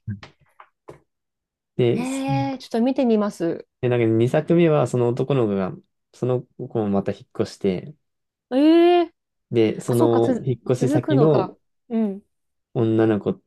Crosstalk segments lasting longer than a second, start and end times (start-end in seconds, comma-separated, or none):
9.9-11.6